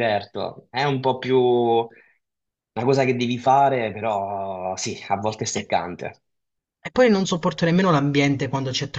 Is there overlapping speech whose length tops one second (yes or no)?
no